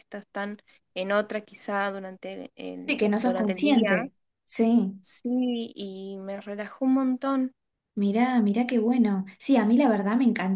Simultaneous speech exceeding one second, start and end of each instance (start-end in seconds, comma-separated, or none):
2.9-4.1